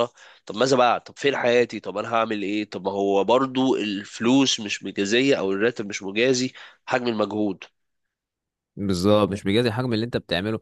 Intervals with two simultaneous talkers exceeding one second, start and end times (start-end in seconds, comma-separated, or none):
none